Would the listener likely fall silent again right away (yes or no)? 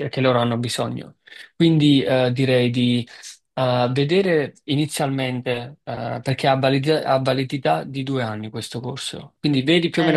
no